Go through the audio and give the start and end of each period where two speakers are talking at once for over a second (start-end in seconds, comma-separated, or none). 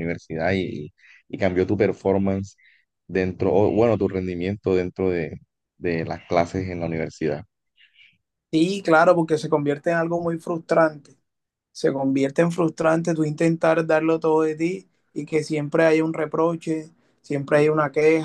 none